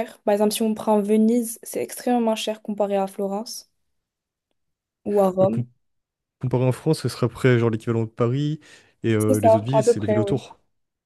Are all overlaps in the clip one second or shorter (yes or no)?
no